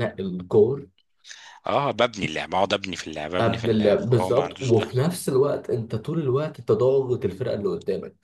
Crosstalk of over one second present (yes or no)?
yes